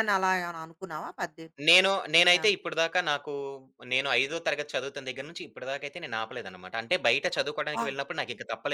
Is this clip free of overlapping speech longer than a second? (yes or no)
yes